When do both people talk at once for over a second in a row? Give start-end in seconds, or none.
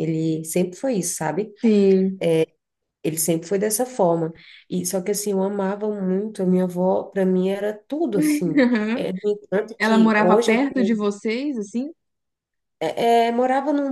9.8-11.1